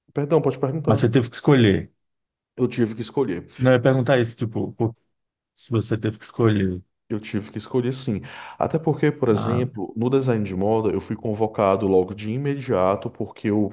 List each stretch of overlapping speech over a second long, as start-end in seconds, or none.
none